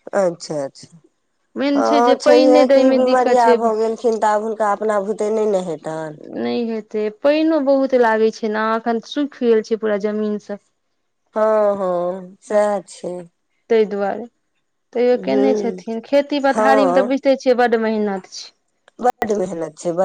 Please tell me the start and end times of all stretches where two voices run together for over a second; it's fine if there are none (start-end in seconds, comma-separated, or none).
1.8-3.6